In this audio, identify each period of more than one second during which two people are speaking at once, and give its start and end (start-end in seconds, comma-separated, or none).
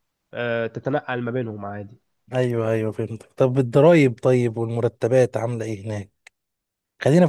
none